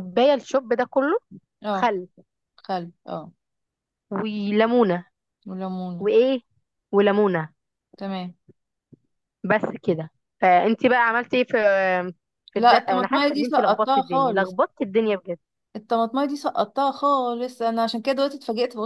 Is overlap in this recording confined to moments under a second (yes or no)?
no